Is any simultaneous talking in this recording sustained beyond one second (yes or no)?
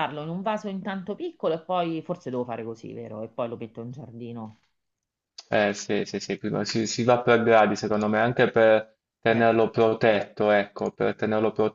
no